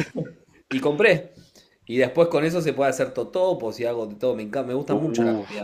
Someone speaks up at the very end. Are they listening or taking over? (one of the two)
listening